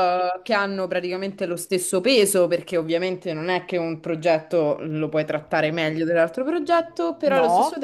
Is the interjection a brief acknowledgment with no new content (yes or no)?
yes